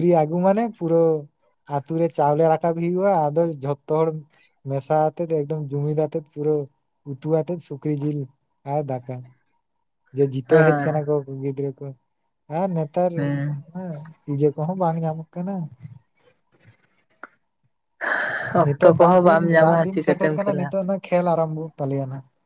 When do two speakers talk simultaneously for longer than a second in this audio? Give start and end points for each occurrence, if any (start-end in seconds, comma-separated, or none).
18.6-20.7